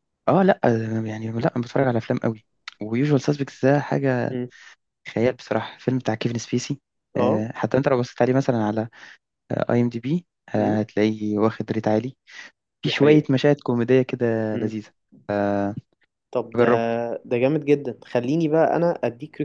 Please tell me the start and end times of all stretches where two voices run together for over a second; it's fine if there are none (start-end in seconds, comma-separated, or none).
none